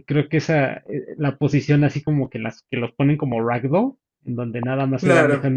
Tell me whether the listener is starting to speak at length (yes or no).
no